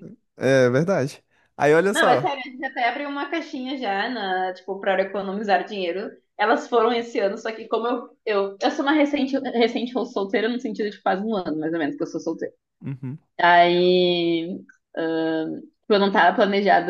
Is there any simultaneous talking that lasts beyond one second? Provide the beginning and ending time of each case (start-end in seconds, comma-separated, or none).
none